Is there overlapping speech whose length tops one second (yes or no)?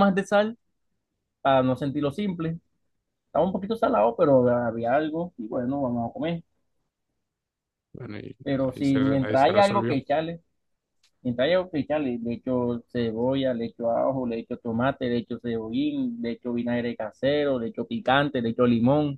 yes